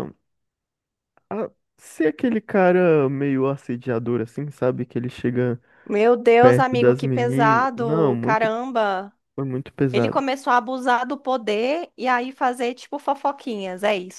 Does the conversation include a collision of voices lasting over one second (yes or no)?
yes